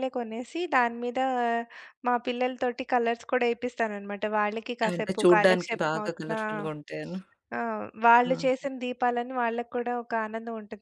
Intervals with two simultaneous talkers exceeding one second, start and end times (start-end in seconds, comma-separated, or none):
4.9-6.4